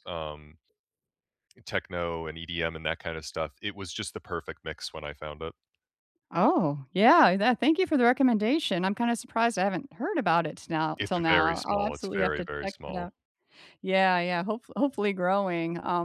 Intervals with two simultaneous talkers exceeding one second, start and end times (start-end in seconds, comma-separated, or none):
11.0-13.1